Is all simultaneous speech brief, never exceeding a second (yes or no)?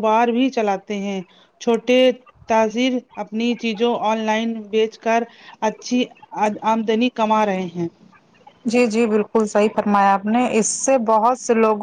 yes